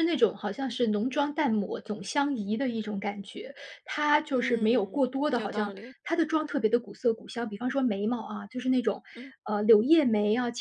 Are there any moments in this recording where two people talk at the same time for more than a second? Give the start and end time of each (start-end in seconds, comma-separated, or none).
4.3-5.9